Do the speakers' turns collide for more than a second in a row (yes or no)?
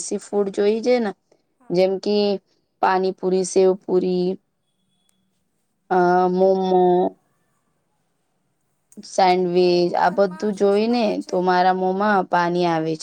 yes